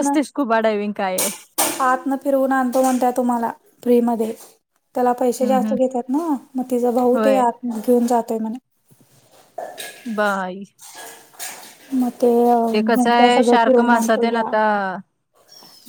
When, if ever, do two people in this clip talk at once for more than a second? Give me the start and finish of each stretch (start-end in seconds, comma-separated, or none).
12.9-14.5